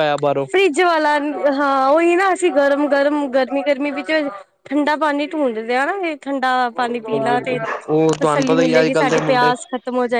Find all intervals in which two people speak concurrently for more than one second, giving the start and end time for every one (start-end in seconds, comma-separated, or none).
6.8-9.5